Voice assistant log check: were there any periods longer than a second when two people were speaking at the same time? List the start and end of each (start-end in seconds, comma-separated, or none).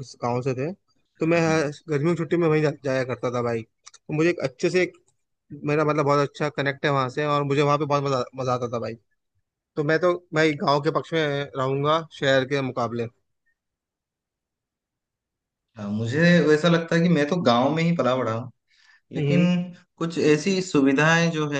none